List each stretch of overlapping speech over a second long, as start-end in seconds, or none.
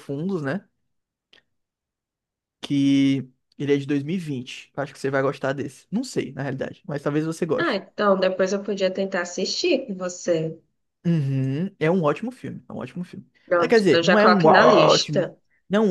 13.4-15.3